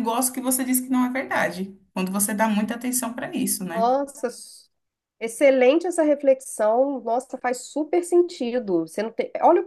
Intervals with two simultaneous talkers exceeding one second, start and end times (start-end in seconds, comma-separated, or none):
none